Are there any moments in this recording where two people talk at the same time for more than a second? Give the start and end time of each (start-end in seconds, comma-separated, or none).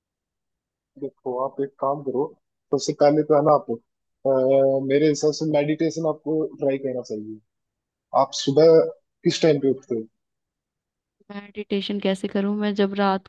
none